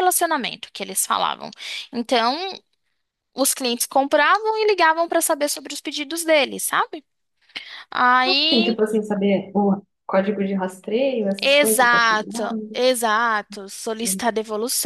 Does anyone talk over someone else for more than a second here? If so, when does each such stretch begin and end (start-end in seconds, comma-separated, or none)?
11.4-12.8